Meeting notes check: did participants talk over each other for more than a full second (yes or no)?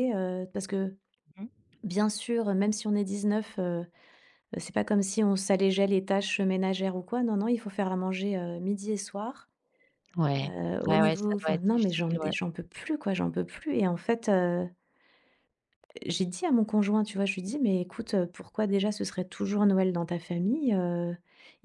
yes